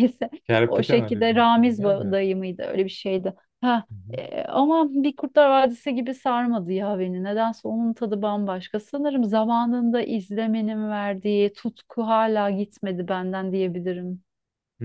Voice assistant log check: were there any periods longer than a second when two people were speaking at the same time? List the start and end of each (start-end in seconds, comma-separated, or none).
0.7-2.2